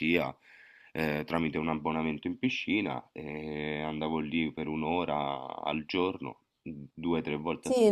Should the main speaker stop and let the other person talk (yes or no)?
yes